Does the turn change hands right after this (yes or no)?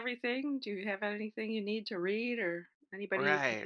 yes